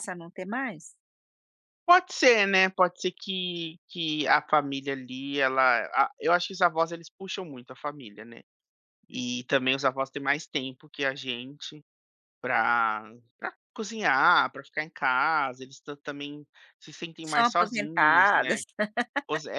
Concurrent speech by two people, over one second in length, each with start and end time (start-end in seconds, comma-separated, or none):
17.2-18.6